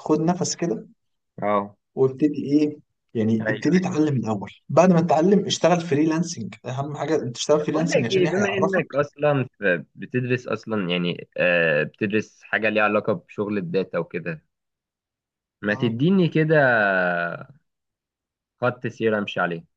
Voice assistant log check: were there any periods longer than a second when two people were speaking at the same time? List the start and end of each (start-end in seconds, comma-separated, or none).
7.6-9.0